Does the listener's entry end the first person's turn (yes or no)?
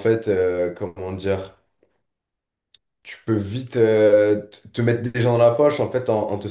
no